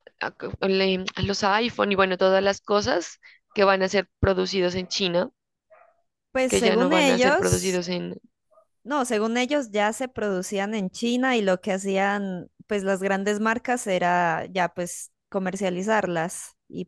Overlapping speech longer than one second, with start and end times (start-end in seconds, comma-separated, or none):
6.5-7.8